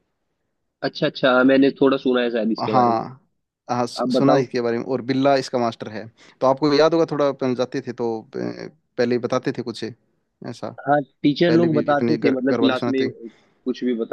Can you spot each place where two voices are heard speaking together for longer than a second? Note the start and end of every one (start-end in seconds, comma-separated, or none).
11.5-13.0